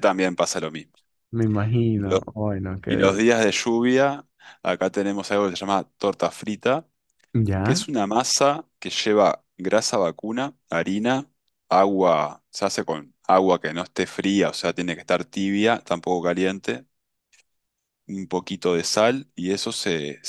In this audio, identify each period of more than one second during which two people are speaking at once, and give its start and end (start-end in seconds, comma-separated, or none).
none